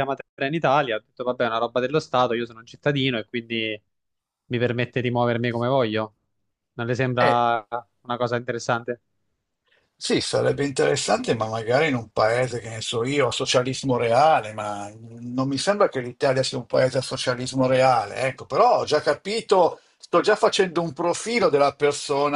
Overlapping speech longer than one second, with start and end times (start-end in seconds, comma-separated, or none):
none